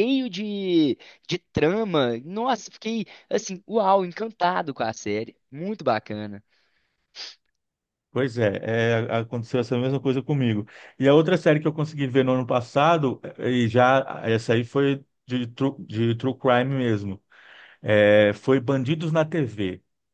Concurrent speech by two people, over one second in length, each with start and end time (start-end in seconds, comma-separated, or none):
none